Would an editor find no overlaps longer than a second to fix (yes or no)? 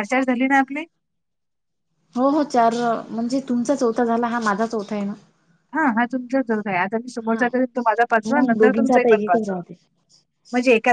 no